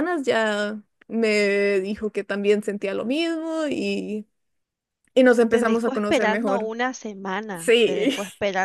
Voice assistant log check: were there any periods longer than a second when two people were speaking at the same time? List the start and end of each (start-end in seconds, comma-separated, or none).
5.5-6.7